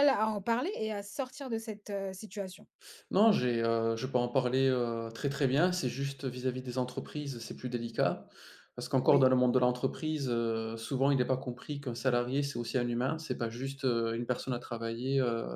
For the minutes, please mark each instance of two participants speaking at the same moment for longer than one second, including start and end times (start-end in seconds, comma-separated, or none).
none